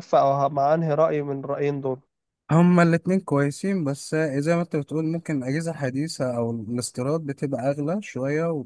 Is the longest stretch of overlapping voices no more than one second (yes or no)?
yes